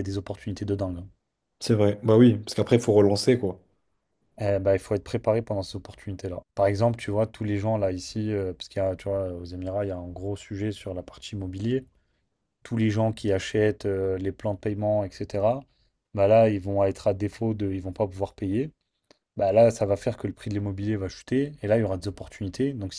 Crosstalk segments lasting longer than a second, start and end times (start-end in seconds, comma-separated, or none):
none